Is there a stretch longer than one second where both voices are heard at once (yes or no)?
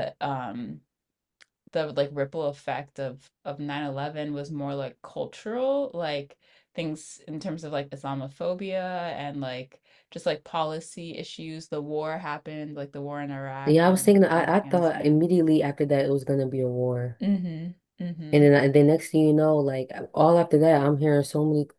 yes